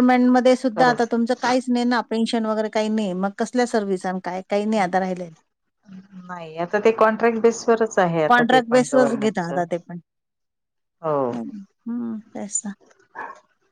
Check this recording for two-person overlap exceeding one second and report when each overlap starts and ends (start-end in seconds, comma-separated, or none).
8.3-9.6